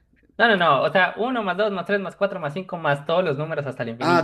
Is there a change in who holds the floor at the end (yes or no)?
yes